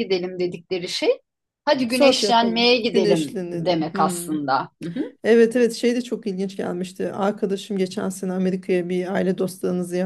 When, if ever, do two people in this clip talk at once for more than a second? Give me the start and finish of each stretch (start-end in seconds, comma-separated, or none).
1.9-4.4